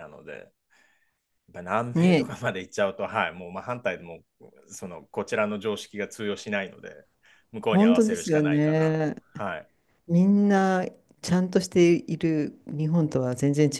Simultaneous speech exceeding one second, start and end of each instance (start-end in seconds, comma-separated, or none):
7.7-9.2